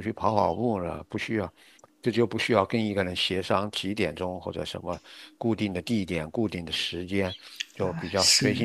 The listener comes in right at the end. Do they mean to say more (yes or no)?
no